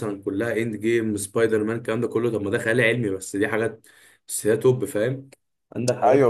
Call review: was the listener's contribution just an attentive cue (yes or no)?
no